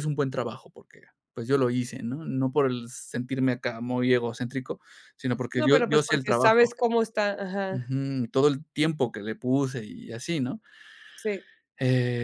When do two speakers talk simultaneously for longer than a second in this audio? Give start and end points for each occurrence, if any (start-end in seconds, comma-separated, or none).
5.6-6.8